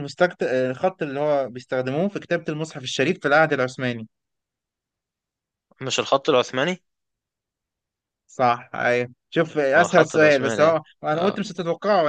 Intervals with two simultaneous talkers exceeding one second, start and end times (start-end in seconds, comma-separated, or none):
9.8-11.5